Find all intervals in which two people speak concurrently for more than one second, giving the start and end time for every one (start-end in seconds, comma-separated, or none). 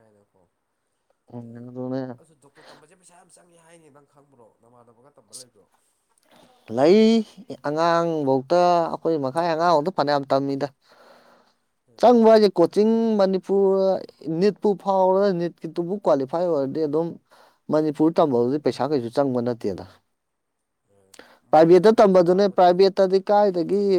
21.5-22.9